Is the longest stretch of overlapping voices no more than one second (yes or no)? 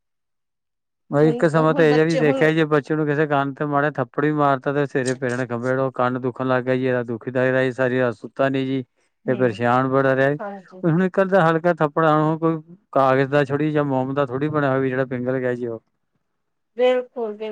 no